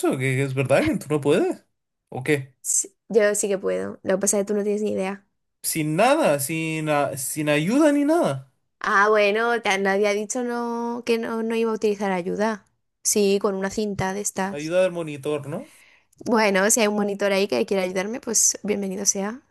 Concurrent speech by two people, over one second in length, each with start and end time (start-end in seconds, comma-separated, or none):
none